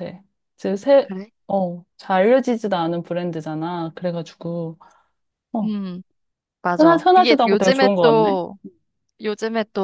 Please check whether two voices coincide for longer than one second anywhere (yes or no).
yes